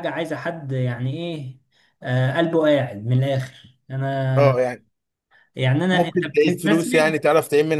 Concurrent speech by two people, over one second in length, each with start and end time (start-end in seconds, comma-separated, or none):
5.9-7.2